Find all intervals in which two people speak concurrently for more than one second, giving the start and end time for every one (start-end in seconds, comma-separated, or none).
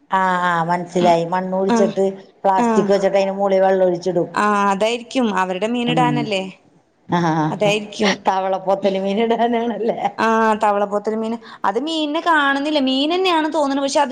none